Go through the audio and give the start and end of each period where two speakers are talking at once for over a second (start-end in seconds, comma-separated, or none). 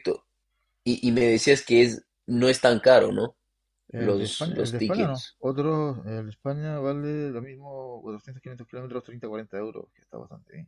3.9-5.4